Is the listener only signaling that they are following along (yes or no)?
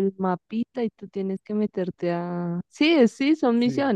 no